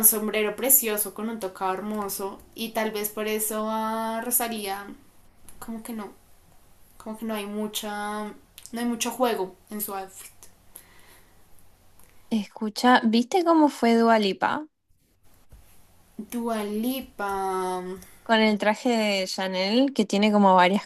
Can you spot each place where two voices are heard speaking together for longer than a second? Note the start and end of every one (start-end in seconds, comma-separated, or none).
none